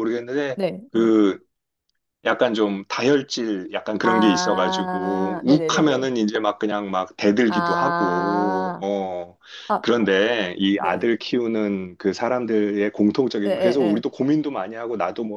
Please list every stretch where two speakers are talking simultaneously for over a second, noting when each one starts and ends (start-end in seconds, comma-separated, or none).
4.0-6.1, 7.5-8.8